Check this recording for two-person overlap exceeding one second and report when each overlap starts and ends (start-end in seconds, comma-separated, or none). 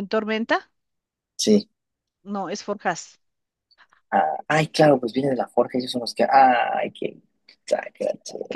none